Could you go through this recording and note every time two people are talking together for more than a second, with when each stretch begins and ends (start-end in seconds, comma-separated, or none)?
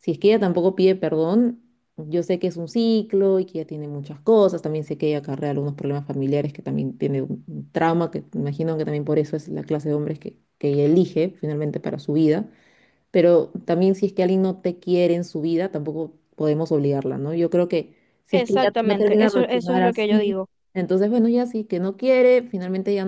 18.3-20.4